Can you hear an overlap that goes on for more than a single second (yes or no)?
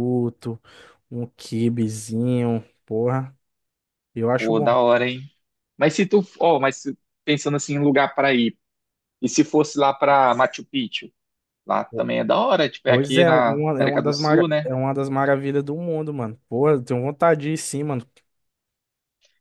yes